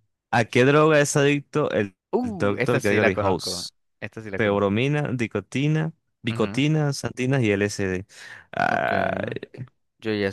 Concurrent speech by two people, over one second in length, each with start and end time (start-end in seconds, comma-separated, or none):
2.1-3.6